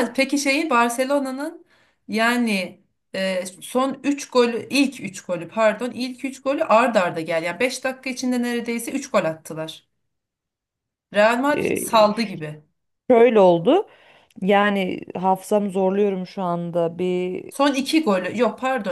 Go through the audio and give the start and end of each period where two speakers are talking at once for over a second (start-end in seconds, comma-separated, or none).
none